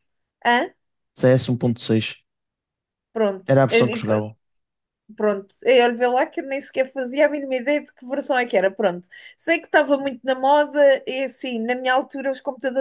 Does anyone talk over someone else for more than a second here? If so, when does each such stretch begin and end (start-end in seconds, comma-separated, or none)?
none